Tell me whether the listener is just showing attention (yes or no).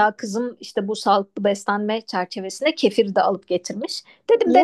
yes